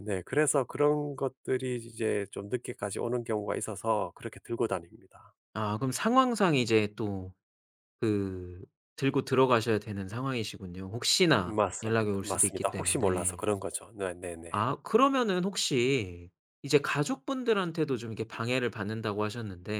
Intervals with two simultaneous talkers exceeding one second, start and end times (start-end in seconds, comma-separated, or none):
11.4-13.4